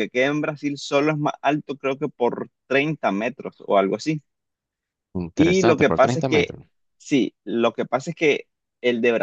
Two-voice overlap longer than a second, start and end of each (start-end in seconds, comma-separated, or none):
5.3-6.5